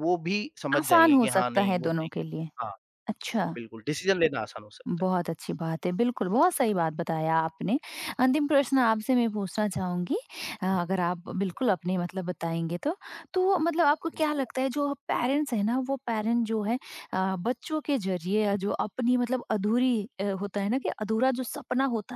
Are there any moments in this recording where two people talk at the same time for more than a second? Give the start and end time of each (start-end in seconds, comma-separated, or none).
0.8-2.5